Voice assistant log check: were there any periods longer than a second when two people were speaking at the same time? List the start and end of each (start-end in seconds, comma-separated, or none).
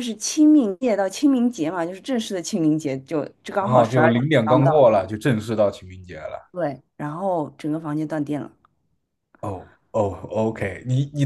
3.6-4.9